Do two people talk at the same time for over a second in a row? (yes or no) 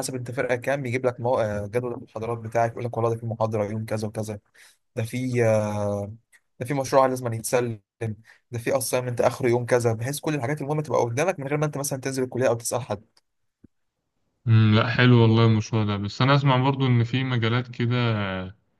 no